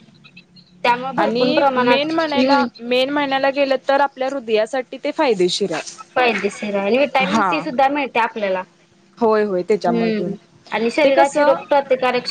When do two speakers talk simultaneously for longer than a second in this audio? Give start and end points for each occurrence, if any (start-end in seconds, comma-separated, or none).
1.2-2.6